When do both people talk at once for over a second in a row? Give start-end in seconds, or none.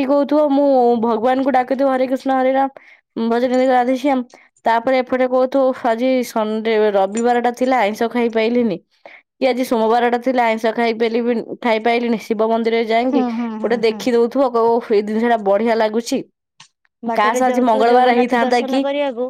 17.2-18.8